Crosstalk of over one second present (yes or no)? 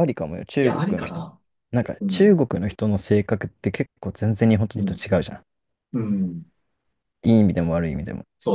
no